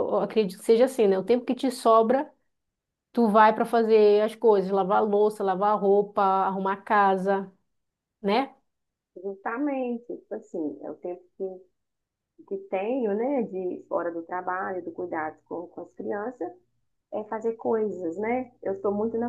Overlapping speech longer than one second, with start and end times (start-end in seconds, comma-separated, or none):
none